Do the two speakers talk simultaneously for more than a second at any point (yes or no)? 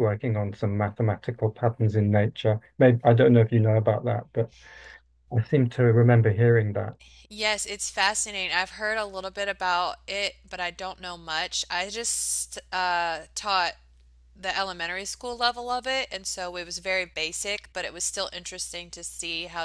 no